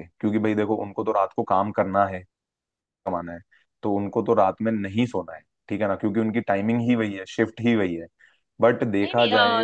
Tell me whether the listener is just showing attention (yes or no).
no